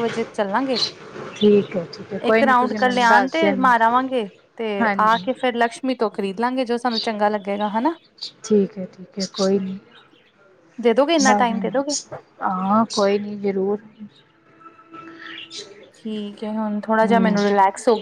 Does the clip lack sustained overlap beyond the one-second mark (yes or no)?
no